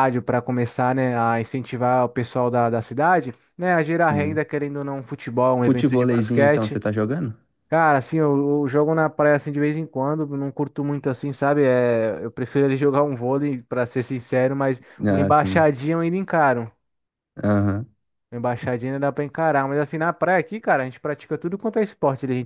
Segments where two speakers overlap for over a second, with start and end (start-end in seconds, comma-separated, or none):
5.6-6.8